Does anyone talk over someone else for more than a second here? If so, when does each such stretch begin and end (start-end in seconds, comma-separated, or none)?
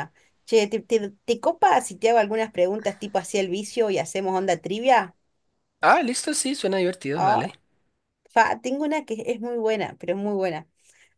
none